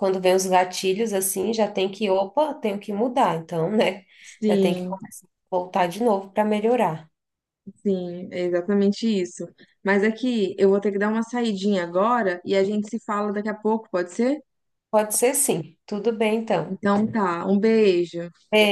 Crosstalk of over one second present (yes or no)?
no